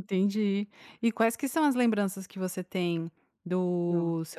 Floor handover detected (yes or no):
no